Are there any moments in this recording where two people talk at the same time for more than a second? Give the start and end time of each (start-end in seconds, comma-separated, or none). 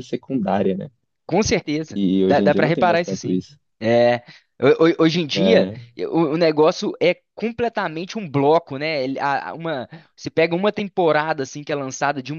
1.9-3.4